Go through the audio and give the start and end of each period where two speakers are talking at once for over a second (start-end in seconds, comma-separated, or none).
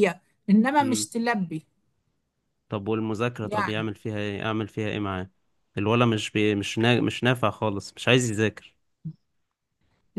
none